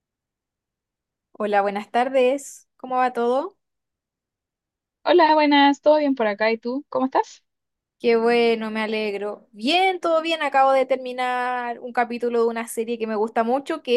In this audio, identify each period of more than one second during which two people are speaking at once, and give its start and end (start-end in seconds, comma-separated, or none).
none